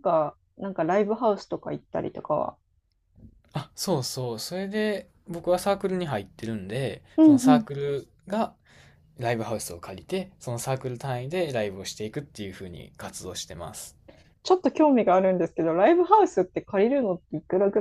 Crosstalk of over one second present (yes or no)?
no